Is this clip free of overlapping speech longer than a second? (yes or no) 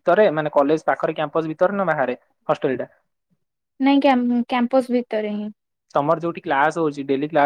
yes